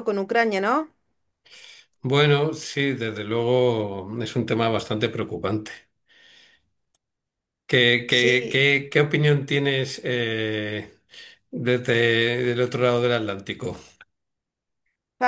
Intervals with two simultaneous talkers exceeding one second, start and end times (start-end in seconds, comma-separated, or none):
none